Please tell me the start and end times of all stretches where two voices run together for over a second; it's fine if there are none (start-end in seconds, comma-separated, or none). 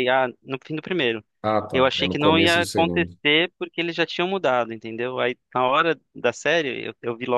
1.7-3.1